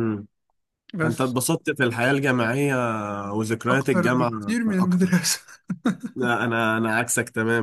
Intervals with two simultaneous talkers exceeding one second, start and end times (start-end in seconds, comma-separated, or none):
3.7-5.3